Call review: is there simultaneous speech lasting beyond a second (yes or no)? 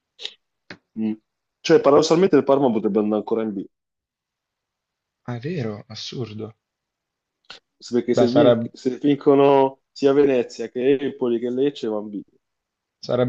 no